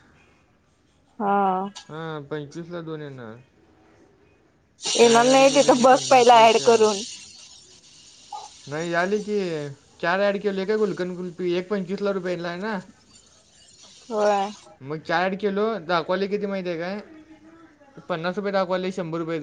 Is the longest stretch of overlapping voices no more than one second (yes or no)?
no